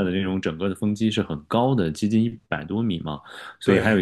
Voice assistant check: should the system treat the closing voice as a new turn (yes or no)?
no